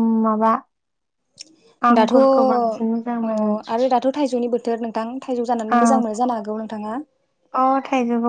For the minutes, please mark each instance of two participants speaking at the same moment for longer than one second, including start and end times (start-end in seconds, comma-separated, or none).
2.0-3.4